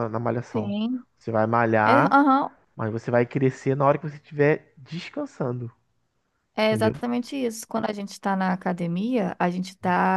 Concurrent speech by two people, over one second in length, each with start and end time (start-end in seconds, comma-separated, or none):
none